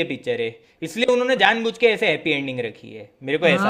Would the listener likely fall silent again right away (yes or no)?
no